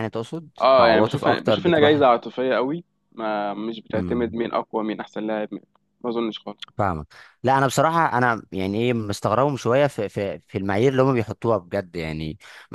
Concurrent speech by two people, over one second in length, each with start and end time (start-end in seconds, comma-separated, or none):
0.6-2.0